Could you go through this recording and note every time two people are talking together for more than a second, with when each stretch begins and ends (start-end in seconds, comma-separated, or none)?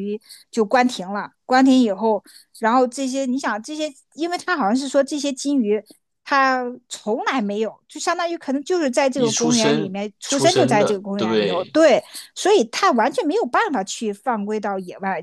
9.1-11.8